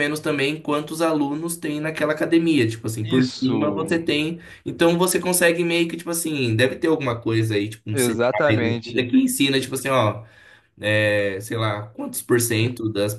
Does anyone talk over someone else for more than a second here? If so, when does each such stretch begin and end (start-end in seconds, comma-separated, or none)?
7.9-9.1